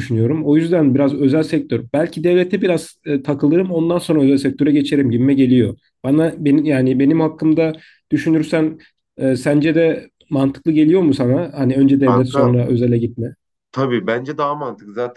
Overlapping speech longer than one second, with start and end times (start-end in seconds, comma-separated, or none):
none